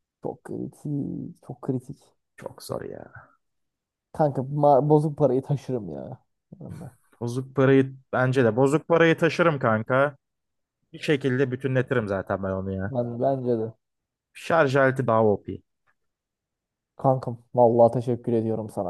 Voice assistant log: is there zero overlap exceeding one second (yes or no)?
yes